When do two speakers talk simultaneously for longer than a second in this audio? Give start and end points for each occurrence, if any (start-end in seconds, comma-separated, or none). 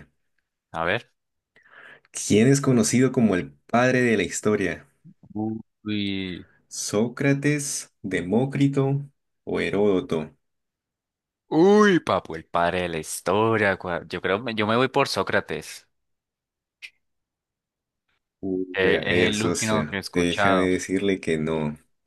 18.7-20.7